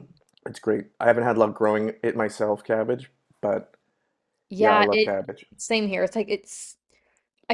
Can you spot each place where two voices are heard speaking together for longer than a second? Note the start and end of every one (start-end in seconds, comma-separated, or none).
none